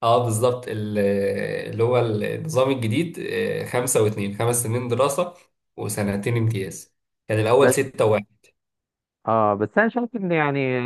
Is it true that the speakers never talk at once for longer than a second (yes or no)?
yes